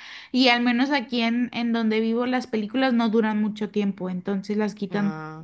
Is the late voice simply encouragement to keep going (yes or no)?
yes